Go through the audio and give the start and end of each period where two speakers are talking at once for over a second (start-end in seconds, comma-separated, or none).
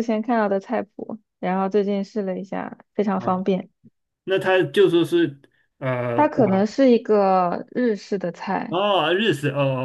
none